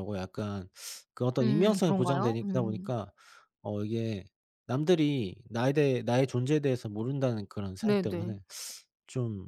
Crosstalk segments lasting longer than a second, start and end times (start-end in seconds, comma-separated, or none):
1.4-2.9